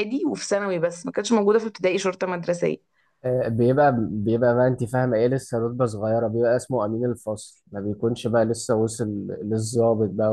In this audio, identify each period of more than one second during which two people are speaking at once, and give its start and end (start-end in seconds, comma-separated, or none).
none